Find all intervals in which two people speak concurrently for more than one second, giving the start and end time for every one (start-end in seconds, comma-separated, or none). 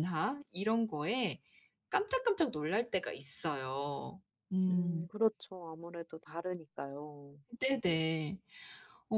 none